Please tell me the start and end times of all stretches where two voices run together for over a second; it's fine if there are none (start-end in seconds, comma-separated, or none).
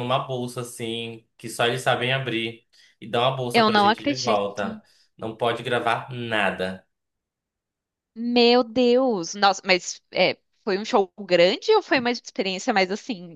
3.5-4.8